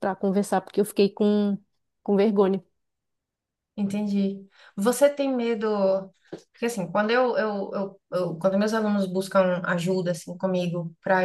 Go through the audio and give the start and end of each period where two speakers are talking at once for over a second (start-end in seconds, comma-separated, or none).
none